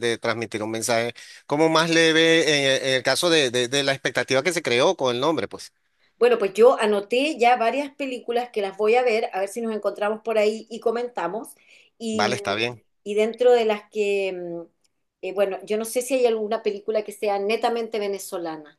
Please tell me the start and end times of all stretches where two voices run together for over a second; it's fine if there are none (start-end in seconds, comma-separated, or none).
none